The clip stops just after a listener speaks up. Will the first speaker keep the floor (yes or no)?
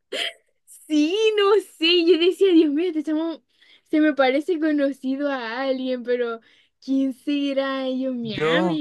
yes